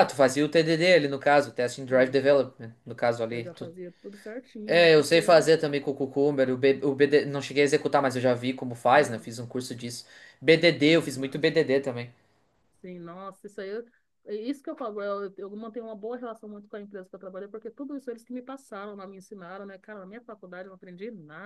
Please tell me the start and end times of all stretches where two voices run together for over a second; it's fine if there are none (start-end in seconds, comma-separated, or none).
none